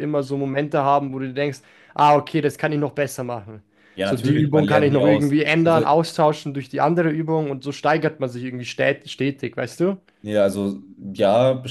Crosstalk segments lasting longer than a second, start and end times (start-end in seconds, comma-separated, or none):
4.0-5.8